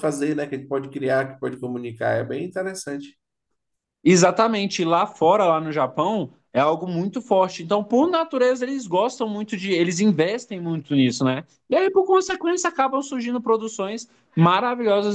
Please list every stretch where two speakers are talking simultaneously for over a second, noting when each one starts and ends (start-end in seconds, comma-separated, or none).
none